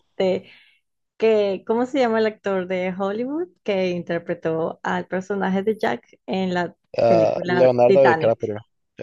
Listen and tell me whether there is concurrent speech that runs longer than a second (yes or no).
yes